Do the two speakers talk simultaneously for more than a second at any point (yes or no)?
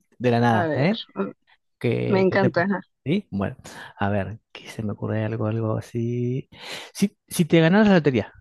no